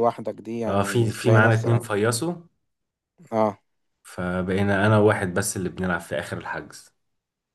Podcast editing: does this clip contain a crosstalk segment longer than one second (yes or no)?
yes